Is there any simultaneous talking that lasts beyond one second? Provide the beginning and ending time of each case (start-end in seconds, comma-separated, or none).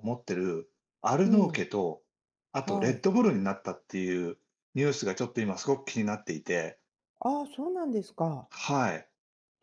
none